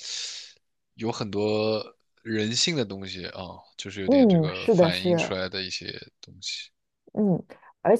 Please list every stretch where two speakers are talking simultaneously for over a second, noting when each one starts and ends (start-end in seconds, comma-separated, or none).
4.0-5.4